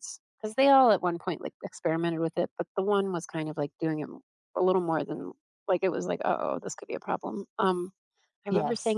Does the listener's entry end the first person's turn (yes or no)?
no